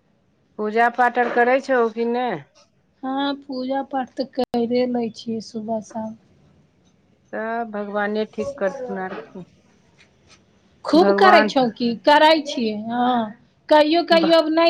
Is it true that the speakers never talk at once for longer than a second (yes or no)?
yes